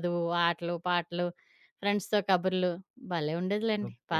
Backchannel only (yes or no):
no